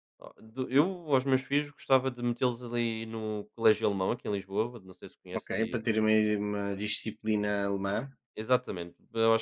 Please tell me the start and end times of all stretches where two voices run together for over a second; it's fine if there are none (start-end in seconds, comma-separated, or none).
none